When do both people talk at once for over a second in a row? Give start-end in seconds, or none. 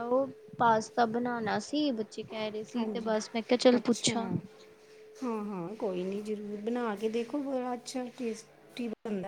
none